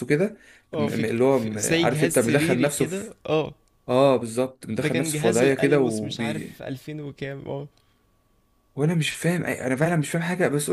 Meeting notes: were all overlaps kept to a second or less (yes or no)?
no